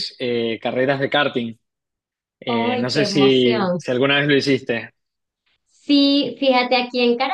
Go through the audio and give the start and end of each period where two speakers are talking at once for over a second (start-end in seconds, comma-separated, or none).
2.5-3.8